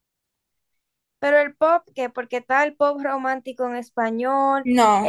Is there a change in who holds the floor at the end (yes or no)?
yes